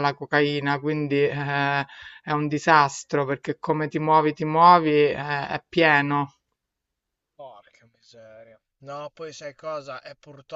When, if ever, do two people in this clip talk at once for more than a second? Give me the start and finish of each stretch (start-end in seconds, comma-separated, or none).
none